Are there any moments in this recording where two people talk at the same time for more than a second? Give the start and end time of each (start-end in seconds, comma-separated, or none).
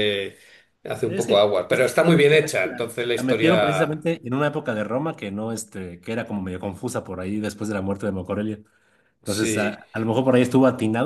1.0-4.0